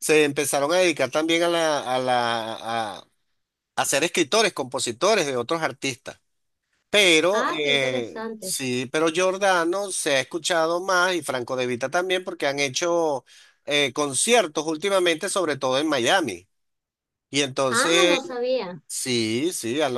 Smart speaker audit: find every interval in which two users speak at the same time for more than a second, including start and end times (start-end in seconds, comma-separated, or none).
7.3-8.6